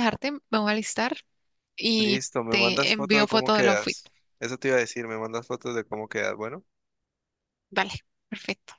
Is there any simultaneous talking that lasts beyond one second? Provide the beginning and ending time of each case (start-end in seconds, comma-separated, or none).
2.0-4.0